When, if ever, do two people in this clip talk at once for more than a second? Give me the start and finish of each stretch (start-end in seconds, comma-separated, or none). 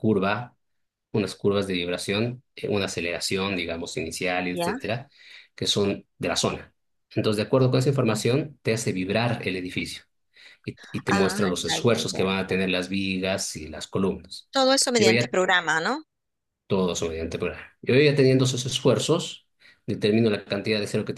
11.1-12.7